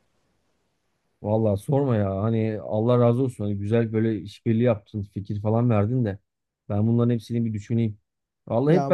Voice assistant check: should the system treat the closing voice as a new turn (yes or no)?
no